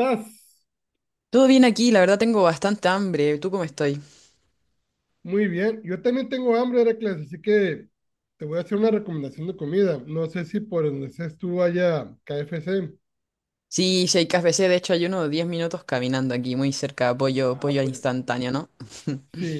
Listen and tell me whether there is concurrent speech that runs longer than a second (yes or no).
no